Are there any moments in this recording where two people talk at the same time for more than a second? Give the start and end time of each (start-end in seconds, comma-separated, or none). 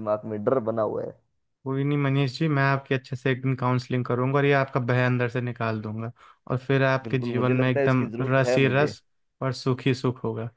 7.0-8.9